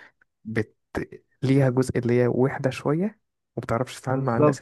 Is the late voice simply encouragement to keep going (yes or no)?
no